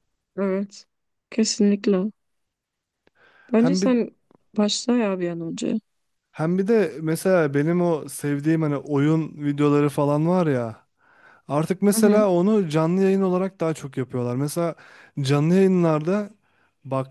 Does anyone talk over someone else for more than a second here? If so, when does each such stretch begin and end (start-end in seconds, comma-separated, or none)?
none